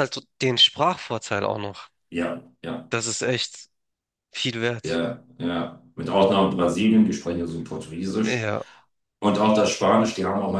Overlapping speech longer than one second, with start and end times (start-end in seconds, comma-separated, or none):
none